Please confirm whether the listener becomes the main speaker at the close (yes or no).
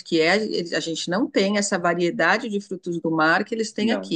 no